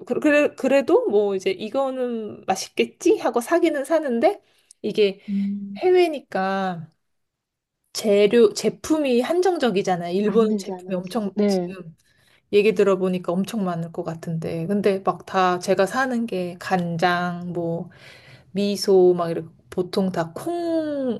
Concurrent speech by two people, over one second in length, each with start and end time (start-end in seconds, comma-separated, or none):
10.2-11.7